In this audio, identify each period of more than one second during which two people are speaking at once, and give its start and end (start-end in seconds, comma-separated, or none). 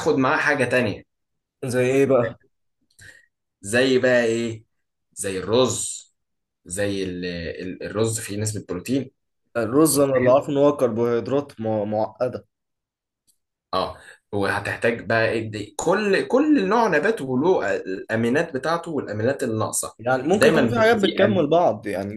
20.3-21.5